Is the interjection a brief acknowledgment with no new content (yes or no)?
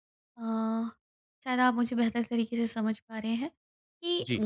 yes